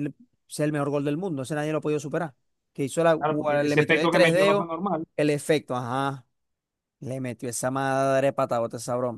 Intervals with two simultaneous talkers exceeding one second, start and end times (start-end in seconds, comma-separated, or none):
3.2-4.7